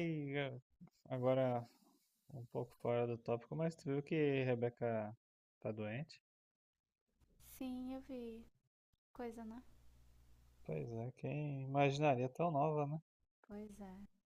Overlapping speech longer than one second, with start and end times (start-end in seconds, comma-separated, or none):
none